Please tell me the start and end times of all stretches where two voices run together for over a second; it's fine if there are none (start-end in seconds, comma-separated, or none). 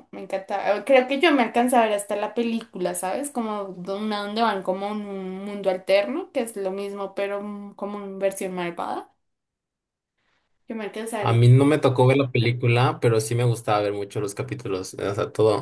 none